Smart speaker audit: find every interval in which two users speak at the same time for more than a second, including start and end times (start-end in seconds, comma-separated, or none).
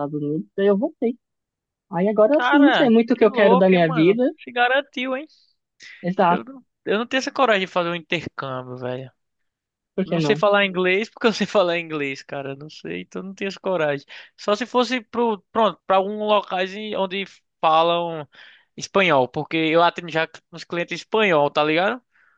2.3-4.2